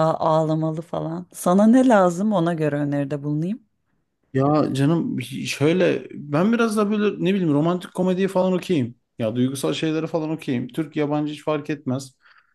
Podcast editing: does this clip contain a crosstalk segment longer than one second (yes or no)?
no